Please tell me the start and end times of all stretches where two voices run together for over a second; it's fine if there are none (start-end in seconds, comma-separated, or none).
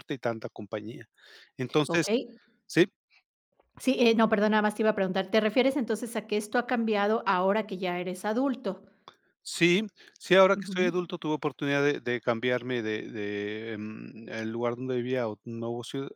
none